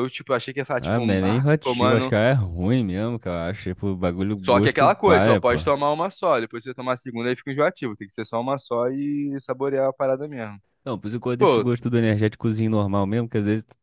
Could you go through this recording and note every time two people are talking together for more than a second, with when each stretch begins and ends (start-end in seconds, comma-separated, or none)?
0.8-2.2, 4.4-5.6